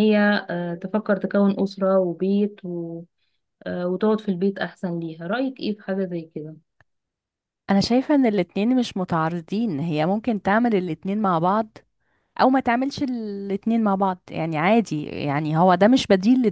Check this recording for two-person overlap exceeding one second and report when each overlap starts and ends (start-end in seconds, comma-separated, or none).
none